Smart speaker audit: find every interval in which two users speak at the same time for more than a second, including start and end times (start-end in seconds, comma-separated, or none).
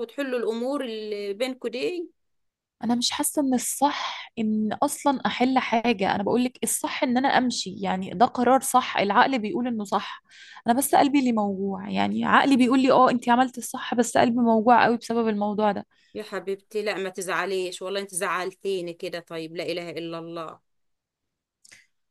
none